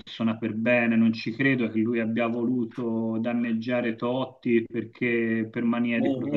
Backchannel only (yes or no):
no